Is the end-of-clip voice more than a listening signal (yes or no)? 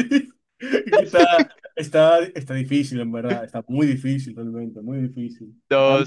no